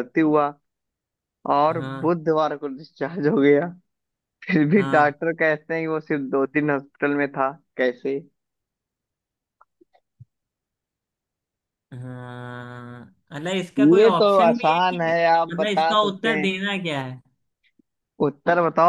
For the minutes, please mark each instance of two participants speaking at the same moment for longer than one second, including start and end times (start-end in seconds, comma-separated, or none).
13.8-16.4